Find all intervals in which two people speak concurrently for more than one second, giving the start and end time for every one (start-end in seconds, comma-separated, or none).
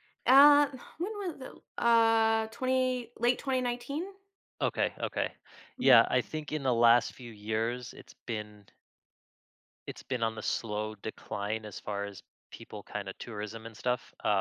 none